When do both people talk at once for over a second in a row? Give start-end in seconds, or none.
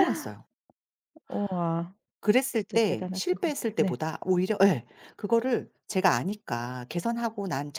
2.5-4.0